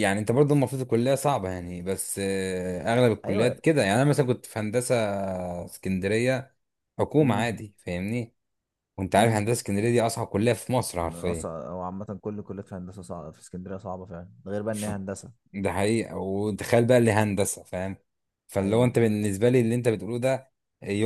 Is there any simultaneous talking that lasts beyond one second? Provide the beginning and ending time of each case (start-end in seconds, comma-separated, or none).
none